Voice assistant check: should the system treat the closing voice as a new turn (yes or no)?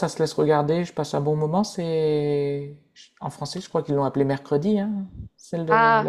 yes